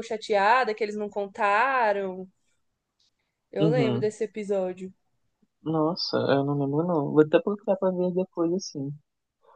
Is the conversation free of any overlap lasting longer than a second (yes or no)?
yes